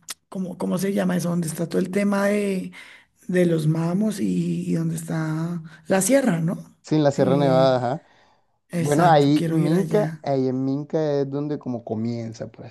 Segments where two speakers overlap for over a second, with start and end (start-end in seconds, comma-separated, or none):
8.8-10.2